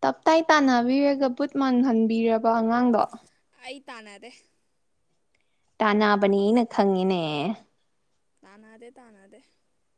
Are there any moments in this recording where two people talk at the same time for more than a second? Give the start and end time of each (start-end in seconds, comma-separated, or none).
none